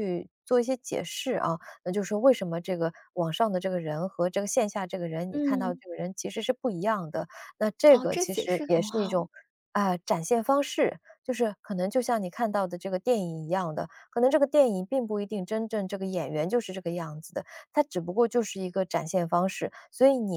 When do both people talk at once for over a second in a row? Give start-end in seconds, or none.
7.9-9.3